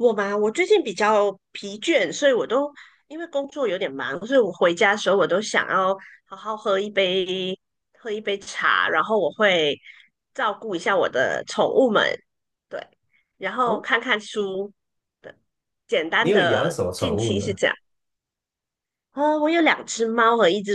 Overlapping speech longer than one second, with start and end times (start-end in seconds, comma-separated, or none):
16.2-17.6